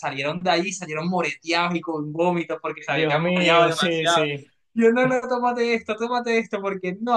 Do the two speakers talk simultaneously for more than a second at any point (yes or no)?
yes